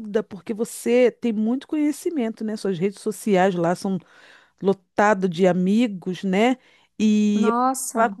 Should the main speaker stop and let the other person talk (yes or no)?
no